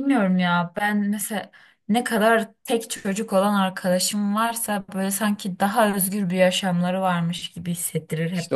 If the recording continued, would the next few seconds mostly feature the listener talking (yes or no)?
yes